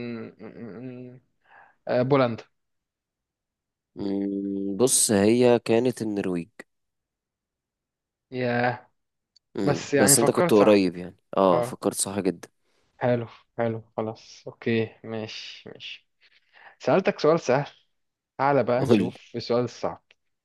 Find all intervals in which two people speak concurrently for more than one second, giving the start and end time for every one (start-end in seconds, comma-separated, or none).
9.6-10.8